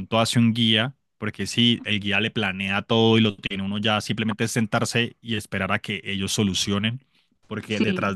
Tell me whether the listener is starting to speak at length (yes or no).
no